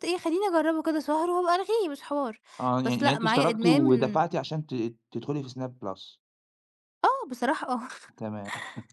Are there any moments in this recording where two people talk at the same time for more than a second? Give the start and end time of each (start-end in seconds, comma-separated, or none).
2.8-4.2